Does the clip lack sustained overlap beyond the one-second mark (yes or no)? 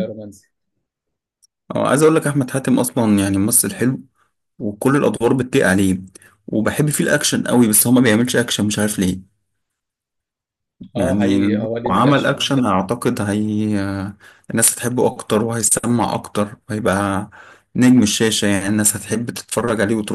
no